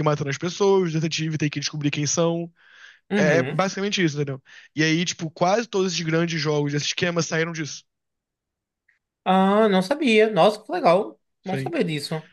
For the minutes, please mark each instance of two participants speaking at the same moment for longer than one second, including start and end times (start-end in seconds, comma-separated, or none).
none